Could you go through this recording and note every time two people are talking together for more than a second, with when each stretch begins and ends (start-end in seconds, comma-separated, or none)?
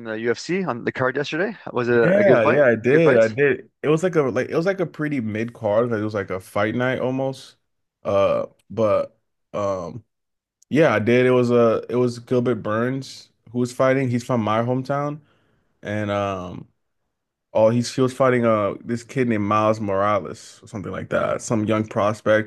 1.9-3.4